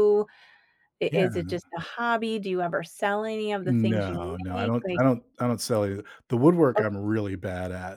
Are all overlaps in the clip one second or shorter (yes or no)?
no